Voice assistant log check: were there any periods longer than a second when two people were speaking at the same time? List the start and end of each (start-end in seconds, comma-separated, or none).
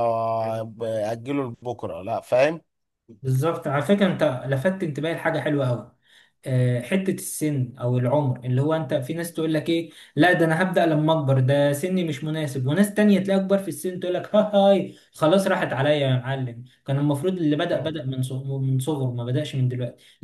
none